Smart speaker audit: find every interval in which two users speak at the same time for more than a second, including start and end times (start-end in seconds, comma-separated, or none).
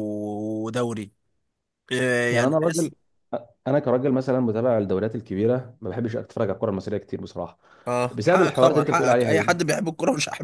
8.1-9.5